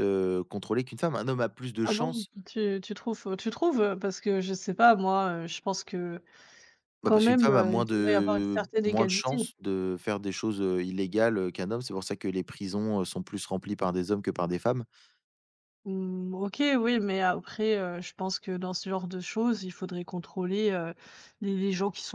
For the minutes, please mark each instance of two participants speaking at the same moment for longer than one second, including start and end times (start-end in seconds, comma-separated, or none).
7.0-9.4